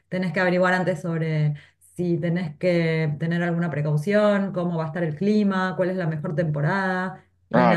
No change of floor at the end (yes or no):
no